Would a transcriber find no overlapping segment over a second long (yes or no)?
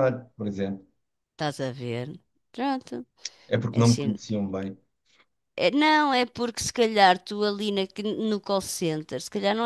yes